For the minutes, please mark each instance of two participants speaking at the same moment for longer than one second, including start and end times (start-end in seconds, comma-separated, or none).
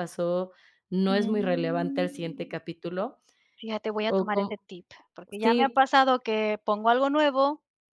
1.1-2.5